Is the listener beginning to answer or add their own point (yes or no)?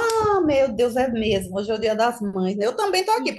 no